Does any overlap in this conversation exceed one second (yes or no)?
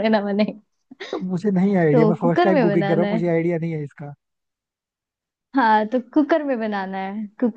yes